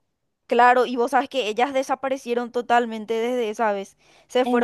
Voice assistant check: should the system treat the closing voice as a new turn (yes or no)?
no